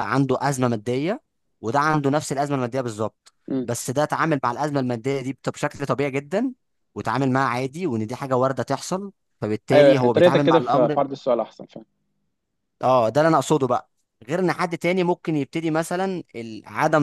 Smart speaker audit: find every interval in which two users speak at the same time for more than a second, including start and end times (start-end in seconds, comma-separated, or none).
9.7-11.0